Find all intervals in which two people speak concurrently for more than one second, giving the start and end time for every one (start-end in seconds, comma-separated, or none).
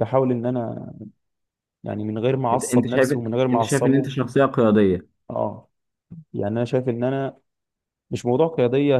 2.5-4.1